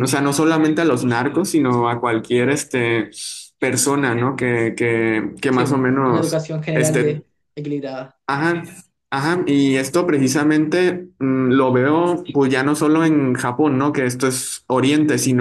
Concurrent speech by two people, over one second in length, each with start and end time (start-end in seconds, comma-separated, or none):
5.5-7.2